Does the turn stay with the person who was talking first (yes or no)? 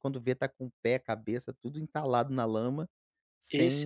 no